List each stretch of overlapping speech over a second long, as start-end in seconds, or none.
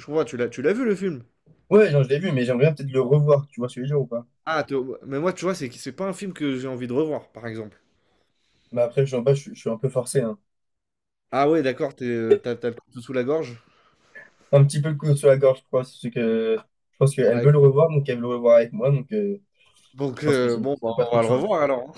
20.1-21.5